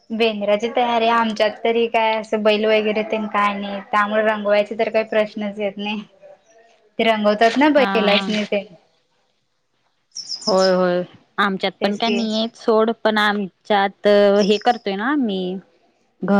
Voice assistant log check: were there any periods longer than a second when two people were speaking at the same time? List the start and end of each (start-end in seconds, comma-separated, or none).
none